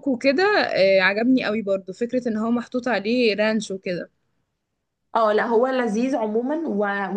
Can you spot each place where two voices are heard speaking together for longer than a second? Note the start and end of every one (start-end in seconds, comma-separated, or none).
none